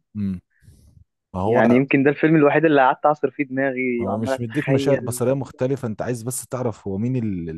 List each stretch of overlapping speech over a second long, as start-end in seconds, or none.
4.0-5.2